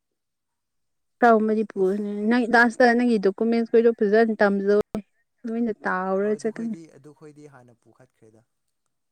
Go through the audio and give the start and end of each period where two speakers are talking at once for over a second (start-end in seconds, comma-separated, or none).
none